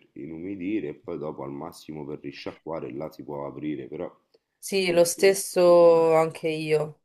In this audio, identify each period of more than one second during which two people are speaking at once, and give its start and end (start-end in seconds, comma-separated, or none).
4.6-6.0